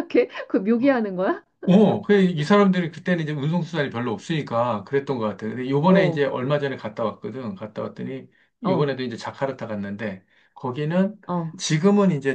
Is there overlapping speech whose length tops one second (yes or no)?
no